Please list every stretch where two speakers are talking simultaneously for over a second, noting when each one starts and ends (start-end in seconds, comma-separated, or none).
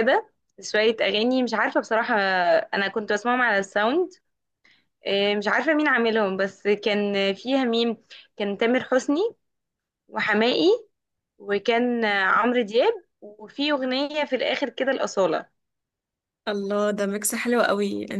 none